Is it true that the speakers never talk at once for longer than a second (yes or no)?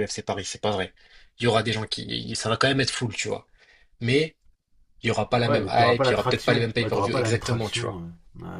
no